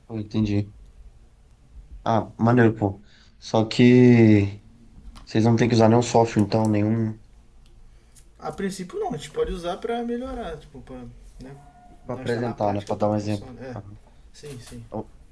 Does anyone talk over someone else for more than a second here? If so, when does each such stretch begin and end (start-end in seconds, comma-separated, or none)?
12.1-13.8